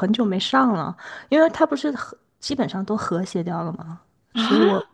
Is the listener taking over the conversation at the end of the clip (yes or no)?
no